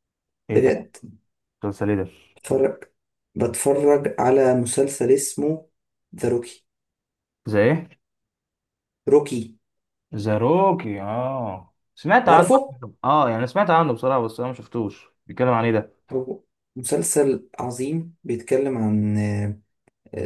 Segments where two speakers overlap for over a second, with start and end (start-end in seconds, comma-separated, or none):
none